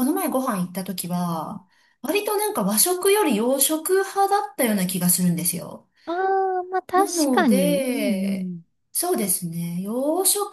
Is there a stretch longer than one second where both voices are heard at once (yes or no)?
yes